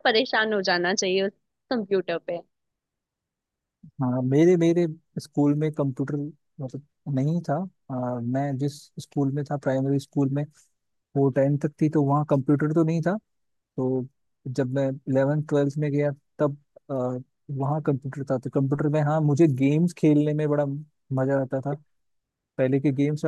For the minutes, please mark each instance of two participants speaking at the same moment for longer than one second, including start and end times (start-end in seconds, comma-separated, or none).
none